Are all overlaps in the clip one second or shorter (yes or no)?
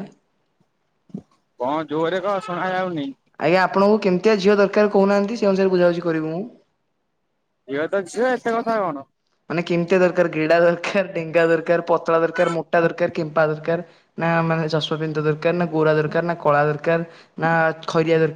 yes